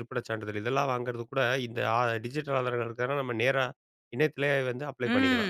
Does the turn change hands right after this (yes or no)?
yes